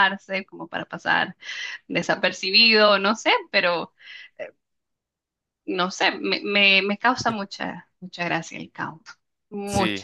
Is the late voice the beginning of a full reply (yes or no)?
yes